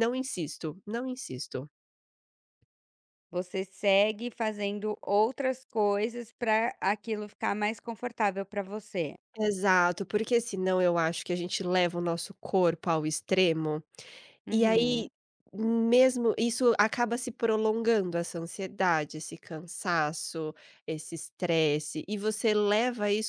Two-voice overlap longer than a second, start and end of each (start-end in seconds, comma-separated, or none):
none